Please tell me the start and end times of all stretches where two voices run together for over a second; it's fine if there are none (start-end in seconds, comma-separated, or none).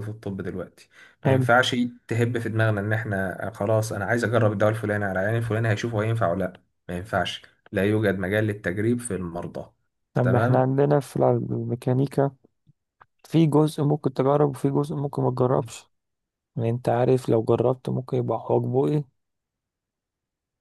none